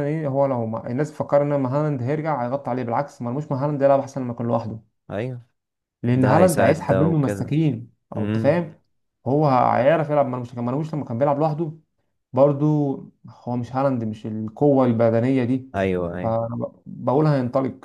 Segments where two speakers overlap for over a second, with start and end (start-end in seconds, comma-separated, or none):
6.1-7.5